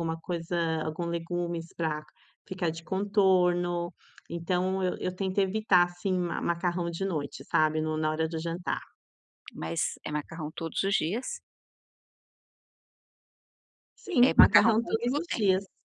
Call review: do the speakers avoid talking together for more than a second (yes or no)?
no